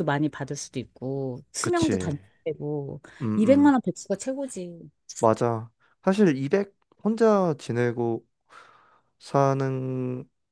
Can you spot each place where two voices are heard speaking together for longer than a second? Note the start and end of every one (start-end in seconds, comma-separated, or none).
none